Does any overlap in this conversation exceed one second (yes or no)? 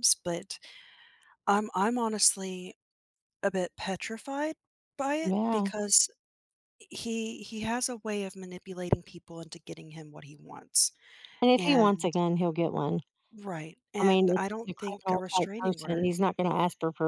yes